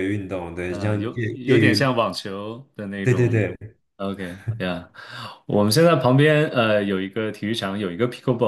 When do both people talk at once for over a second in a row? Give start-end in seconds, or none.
0.7-1.9